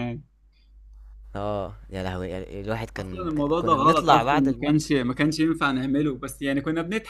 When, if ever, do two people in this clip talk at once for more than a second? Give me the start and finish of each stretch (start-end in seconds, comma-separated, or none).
3.0-4.9